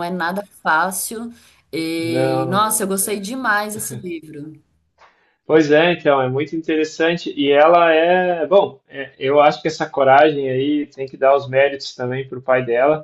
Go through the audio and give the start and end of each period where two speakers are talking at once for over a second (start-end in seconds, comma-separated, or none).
2.0-3.3